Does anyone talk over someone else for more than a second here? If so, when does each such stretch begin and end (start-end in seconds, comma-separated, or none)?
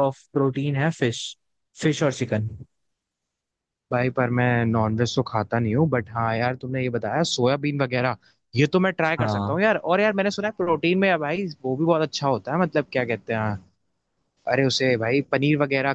none